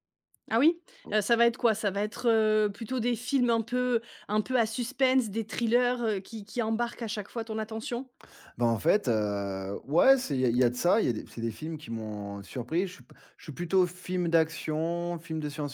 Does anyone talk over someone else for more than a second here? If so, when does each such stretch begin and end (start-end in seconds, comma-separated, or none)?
none